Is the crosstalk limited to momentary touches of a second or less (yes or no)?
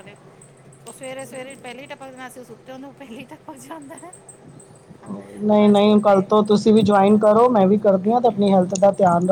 yes